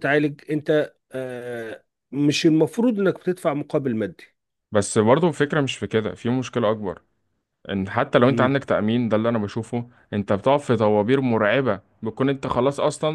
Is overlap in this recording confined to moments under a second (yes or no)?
yes